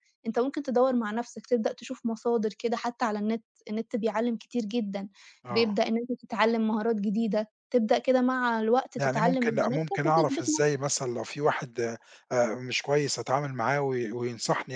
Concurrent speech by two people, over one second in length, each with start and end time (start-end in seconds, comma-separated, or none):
9.0-10.8